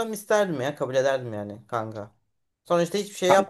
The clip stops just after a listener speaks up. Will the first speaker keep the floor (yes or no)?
yes